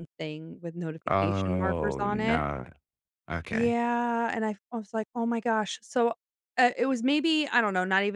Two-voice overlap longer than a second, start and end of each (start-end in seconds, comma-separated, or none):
1.1-2.4